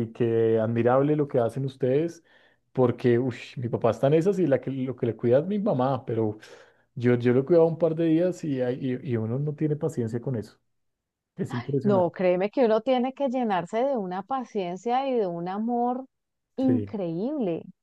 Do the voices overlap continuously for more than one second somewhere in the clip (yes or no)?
no